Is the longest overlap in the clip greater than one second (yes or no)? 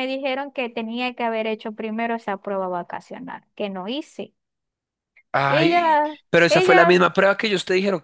yes